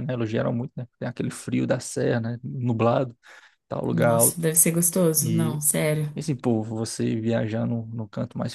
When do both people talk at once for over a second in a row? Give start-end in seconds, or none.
none